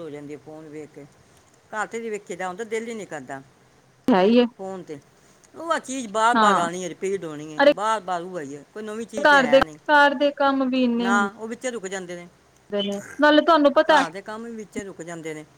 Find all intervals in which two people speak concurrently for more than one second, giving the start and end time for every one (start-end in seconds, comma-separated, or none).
none